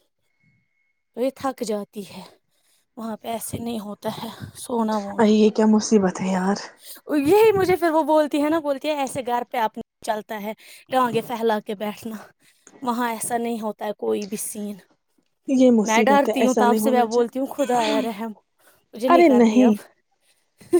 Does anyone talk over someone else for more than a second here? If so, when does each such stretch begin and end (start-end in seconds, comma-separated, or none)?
15.8-17.3